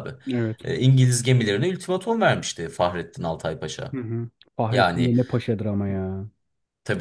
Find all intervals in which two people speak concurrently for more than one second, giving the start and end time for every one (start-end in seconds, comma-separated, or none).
none